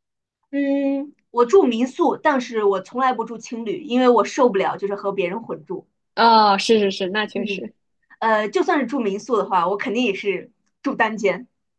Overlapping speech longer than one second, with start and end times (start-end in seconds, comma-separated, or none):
none